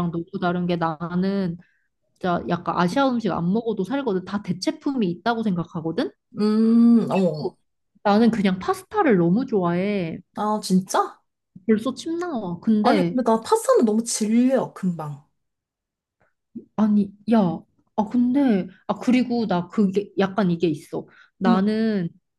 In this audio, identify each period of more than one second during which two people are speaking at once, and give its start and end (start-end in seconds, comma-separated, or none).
none